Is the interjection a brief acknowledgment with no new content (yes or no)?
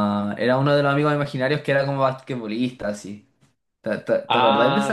no